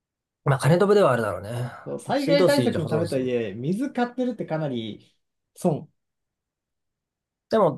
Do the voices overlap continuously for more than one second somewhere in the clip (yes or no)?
yes